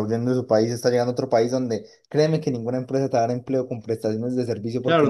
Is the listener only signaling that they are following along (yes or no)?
no